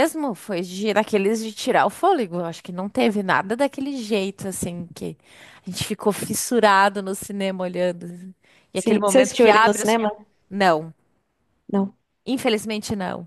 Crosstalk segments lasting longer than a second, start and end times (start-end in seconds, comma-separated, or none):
8.7-10.0